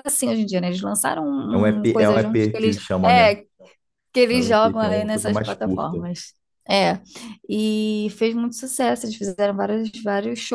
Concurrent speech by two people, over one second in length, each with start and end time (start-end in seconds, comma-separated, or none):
1.5-3.3, 4.3-6.0